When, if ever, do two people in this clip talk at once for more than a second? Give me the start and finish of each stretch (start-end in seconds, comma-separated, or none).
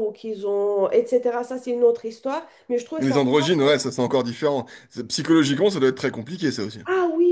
none